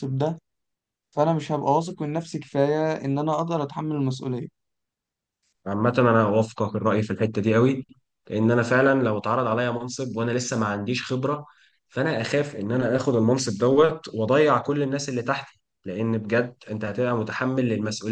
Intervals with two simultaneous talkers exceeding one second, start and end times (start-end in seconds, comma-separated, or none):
none